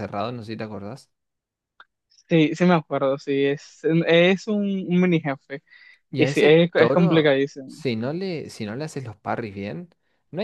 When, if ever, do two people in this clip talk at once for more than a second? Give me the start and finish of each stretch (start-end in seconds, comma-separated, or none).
6.2-7.8